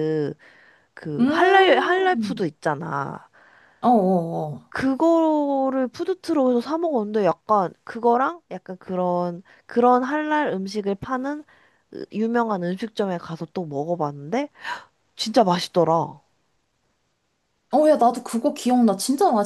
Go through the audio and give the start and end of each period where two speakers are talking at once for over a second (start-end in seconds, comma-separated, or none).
1.2-2.4